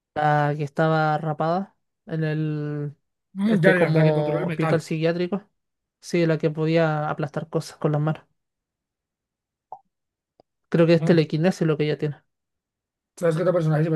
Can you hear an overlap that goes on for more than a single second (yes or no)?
yes